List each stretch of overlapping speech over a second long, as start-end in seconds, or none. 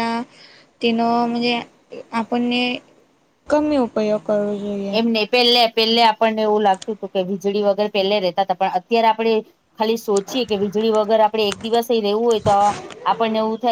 none